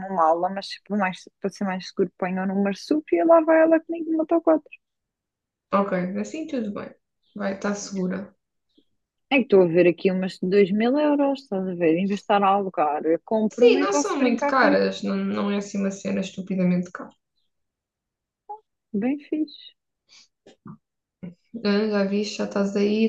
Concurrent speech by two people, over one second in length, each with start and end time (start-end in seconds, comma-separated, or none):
13.5-14.8